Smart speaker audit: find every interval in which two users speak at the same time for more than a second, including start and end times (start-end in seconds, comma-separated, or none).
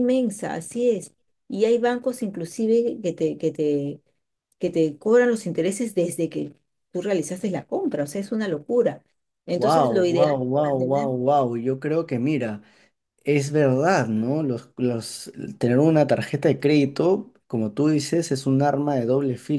9.5-11.1